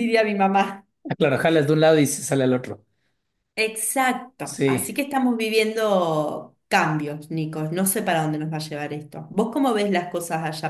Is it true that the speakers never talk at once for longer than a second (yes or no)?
yes